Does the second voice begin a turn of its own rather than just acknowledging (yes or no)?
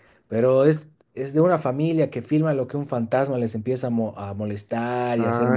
no